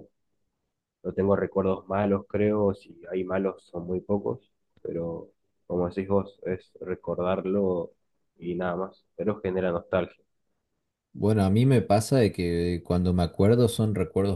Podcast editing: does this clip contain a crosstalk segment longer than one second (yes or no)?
no